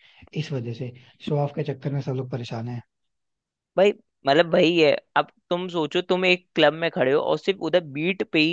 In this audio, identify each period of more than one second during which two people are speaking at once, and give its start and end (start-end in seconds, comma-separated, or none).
none